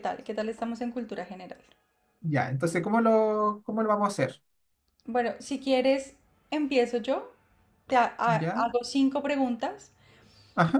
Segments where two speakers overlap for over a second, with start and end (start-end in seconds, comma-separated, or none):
none